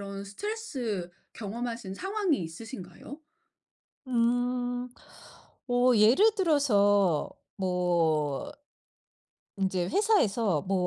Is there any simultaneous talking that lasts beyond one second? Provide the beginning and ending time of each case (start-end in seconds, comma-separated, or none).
none